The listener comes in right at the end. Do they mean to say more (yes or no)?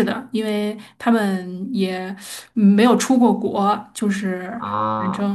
yes